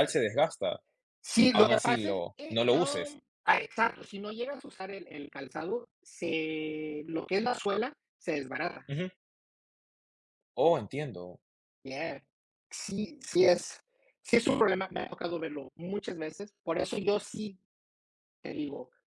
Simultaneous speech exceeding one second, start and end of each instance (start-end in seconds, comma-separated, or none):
1.5-3.2